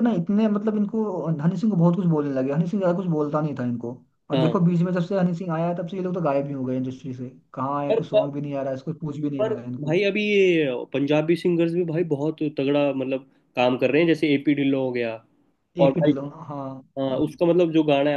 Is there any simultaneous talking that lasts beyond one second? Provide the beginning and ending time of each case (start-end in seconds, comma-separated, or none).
none